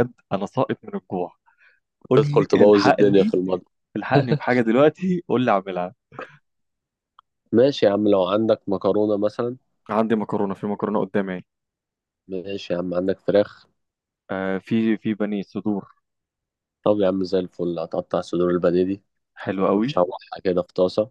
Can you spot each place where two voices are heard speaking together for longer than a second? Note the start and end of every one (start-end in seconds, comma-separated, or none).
2.1-3.4